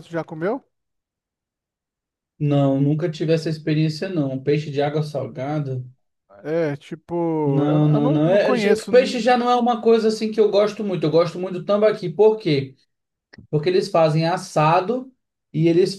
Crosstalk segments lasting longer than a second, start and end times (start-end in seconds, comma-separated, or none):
7.4-8.9